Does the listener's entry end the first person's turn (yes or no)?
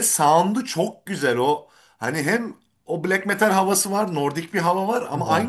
no